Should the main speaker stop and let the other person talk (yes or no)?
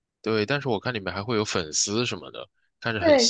yes